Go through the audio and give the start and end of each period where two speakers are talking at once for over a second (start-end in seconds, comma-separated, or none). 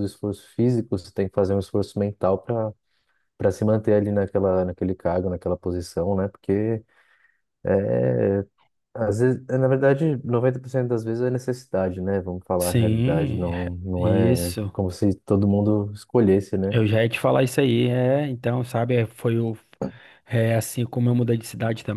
12.6-14.7